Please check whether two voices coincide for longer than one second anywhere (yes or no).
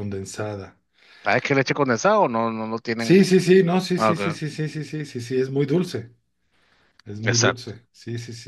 no